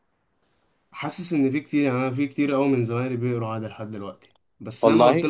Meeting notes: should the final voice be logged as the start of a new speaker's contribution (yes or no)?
no